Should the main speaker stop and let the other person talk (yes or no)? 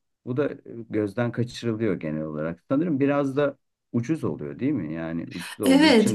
yes